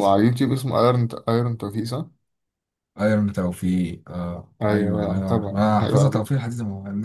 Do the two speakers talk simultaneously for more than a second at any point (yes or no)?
yes